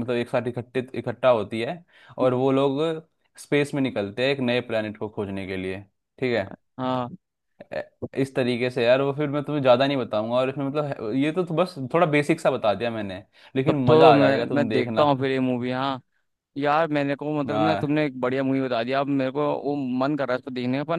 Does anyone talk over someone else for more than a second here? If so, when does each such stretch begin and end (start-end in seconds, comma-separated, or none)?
13.7-15.0